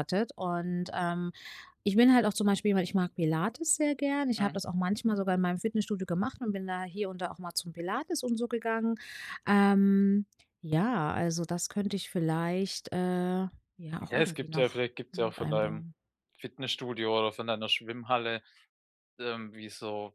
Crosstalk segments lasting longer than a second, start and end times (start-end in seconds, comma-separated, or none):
14.0-15.9